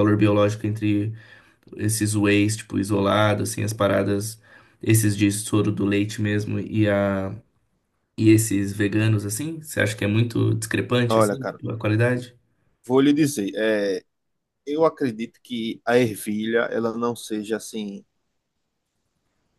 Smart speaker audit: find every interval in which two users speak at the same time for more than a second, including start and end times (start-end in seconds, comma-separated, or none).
none